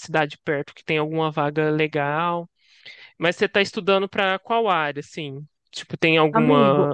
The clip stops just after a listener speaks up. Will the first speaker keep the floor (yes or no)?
yes